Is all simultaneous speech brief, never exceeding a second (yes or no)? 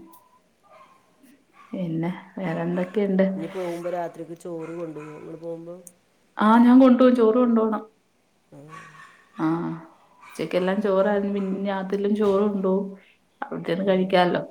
yes